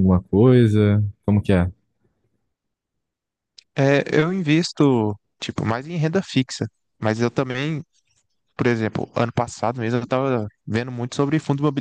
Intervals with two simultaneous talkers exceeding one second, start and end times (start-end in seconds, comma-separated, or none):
none